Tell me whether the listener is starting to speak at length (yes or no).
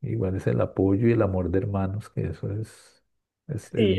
yes